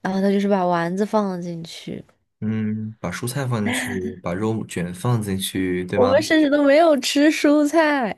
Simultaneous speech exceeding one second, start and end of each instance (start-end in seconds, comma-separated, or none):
none